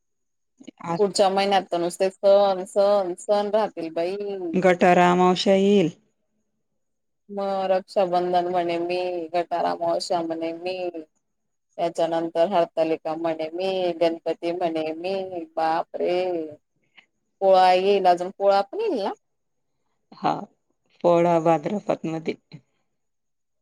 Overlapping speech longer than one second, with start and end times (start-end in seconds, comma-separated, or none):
none